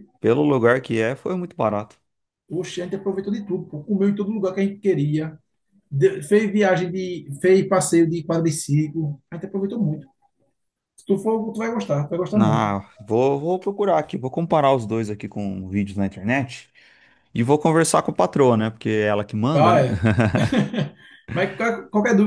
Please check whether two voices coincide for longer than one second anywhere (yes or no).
no